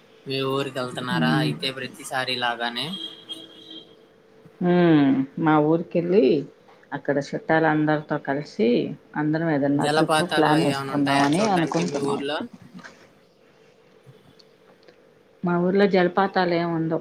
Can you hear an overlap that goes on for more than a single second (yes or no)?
yes